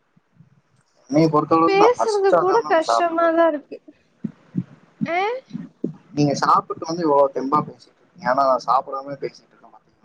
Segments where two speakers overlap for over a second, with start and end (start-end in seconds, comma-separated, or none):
1.7-3.3